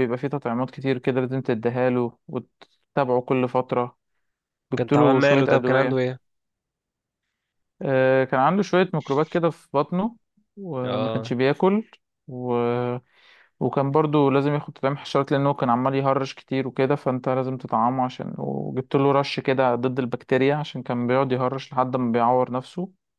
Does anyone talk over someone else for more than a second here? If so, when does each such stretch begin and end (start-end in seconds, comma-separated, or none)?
4.8-6.0